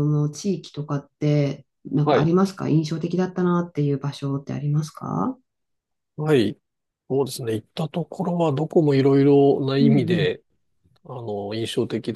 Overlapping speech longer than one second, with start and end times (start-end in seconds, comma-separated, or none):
none